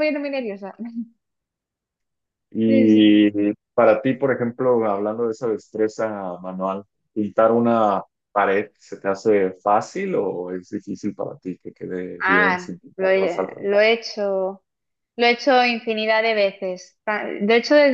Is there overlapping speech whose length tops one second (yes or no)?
yes